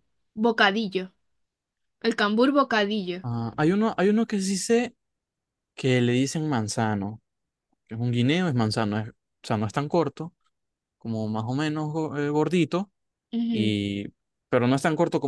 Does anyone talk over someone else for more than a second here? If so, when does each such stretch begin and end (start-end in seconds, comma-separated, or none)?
none